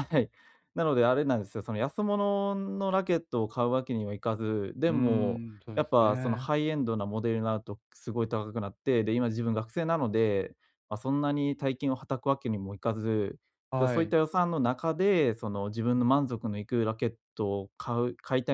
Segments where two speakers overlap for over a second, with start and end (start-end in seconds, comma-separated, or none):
4.9-6.5